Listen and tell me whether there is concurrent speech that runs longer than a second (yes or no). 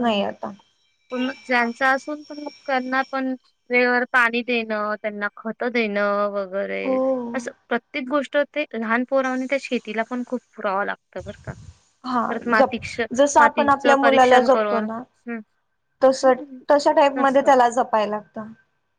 yes